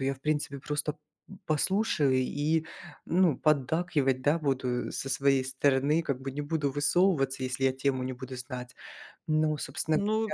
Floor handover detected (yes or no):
yes